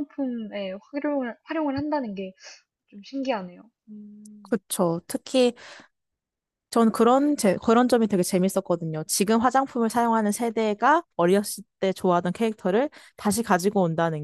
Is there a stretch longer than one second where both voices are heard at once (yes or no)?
no